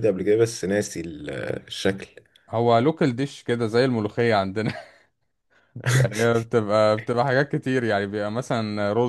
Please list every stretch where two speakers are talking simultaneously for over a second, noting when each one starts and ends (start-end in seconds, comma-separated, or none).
none